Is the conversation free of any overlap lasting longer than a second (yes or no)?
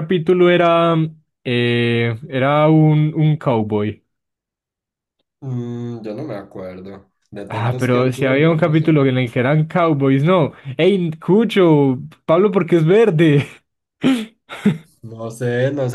no